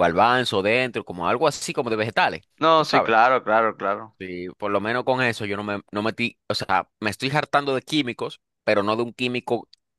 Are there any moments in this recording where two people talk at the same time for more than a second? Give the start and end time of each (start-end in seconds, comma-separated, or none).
none